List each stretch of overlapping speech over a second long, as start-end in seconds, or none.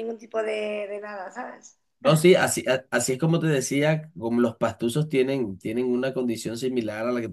none